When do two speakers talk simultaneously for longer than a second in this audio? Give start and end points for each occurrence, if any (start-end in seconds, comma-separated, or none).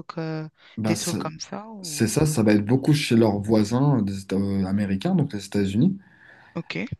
none